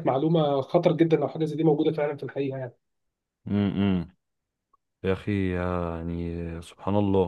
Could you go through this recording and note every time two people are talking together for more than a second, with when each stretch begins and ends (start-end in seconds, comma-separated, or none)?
none